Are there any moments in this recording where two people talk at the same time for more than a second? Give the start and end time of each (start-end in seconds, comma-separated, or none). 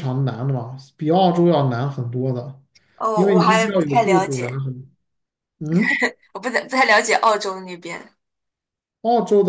3.1-4.6